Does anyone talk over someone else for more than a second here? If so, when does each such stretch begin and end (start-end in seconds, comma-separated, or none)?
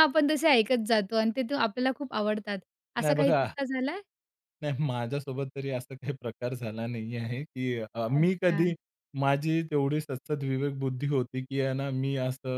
none